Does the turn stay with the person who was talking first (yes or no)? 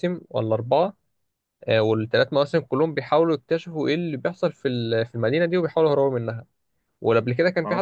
yes